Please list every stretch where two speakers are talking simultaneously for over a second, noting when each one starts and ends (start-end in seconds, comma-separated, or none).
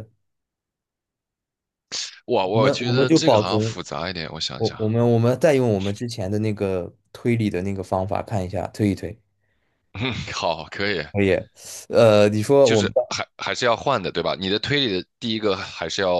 2.5-3.8